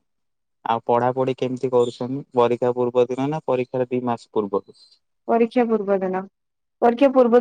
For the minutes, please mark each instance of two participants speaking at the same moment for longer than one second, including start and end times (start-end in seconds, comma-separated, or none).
none